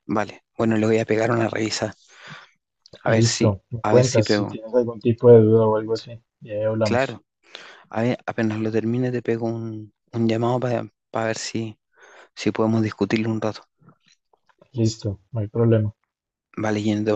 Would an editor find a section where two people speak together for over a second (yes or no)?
yes